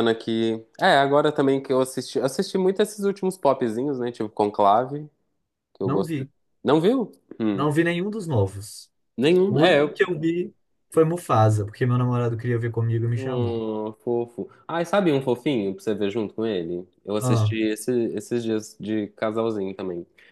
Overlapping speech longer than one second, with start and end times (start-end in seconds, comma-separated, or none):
none